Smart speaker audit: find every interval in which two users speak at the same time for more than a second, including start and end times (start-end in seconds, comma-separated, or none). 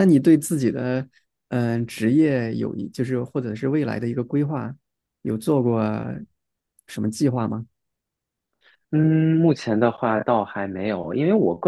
none